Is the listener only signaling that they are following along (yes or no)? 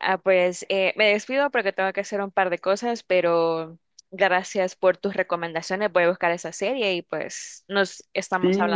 no